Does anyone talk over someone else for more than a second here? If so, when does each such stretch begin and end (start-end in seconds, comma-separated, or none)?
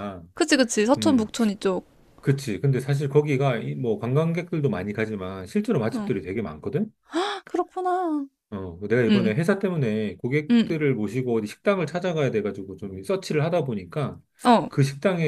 none